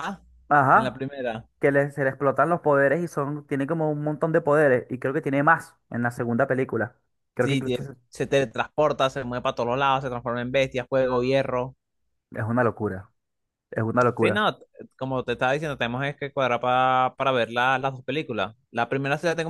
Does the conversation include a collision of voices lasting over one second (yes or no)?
no